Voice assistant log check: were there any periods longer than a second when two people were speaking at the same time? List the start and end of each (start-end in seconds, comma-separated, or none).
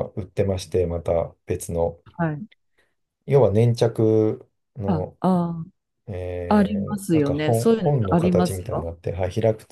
6.5-8.9